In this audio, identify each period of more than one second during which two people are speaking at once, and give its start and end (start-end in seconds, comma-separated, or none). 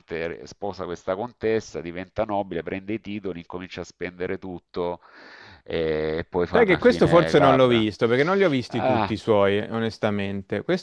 6.5-7.9